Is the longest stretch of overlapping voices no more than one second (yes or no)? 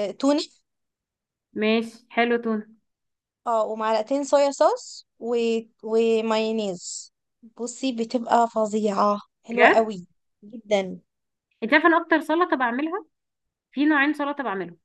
yes